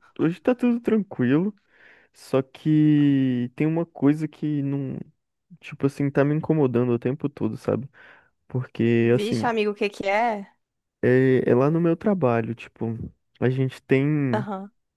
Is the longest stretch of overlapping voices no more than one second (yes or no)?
yes